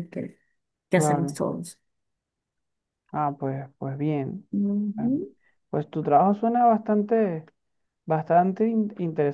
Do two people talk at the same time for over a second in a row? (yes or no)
no